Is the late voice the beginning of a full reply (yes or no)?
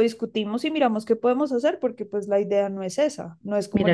yes